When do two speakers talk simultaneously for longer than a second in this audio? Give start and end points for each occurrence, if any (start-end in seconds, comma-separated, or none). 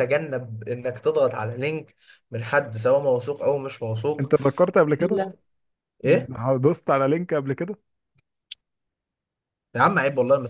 none